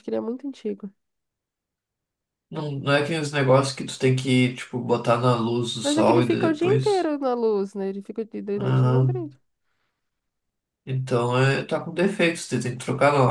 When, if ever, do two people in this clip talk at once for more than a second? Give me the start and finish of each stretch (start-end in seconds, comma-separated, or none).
5.8-7.1